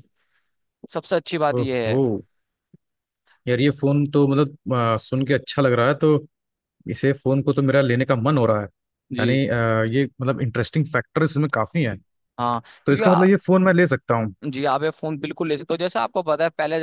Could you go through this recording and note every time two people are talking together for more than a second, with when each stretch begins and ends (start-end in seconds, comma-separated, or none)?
none